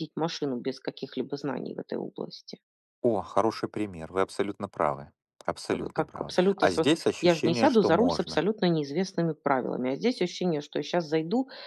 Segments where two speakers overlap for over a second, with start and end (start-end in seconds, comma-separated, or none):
5.7-8.4